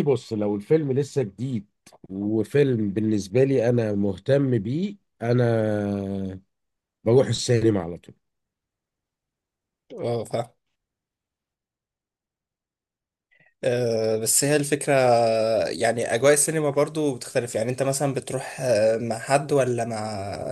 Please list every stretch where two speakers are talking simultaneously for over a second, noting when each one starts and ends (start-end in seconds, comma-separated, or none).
none